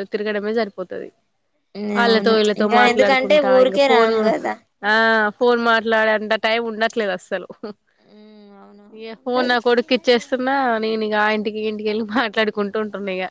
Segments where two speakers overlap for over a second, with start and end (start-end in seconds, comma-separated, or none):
2.1-4.2